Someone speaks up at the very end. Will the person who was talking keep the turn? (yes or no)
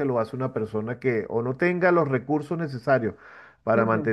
yes